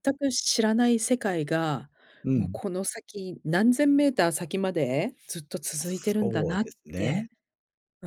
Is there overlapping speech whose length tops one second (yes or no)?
yes